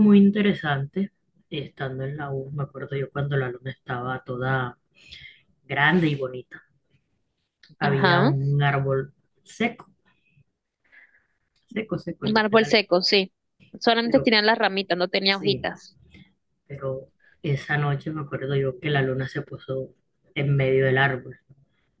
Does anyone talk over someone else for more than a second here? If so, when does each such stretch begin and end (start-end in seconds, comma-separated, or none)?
none